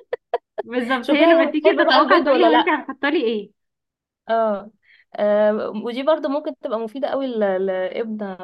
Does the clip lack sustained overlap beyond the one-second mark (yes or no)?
no